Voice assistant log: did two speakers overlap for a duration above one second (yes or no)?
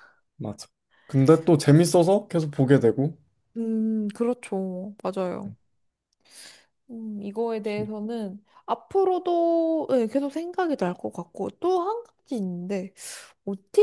no